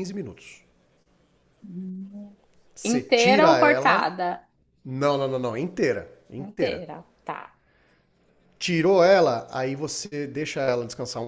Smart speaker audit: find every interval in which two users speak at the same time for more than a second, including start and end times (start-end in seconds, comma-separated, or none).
2.8-4.1